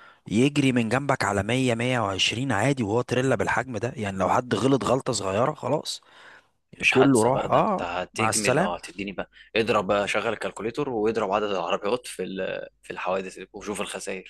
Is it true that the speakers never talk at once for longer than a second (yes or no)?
no